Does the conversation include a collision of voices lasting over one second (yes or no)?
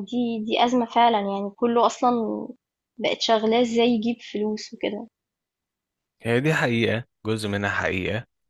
no